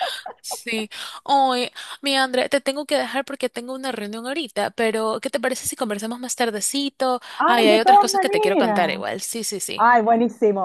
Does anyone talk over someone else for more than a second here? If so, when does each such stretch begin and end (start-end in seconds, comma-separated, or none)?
7.4-8.8